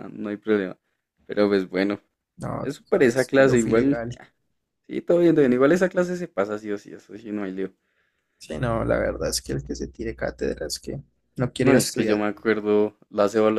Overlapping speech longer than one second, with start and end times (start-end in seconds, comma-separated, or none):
2.6-4.0